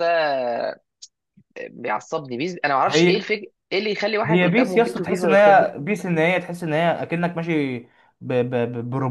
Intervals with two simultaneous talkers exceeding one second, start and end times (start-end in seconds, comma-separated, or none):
4.2-5.7